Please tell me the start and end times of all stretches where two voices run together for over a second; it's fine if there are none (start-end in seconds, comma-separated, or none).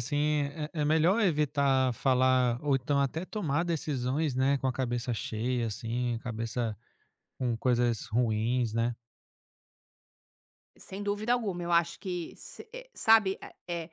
none